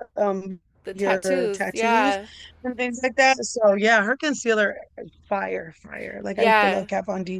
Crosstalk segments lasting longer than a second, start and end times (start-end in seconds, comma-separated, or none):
0.8-2.2